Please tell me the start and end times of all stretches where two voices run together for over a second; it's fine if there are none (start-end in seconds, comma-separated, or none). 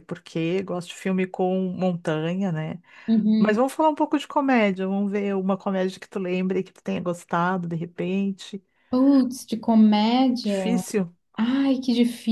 none